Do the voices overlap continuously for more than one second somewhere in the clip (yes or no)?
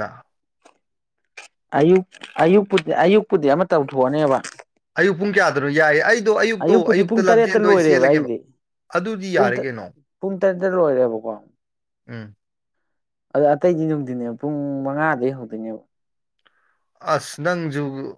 yes